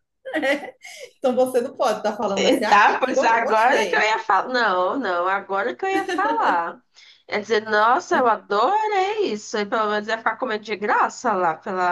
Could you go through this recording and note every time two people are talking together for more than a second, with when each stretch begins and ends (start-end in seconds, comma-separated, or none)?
2.4-4.1